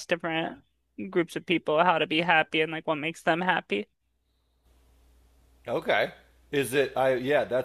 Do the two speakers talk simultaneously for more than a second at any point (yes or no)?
no